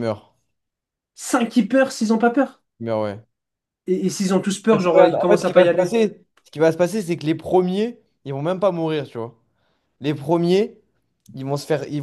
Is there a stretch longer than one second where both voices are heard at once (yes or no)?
yes